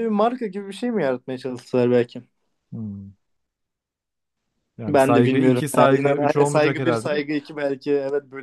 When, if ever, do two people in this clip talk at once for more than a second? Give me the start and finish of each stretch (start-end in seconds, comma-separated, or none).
4.9-7.2